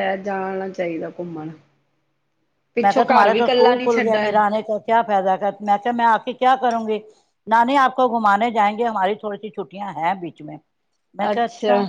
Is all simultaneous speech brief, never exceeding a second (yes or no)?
no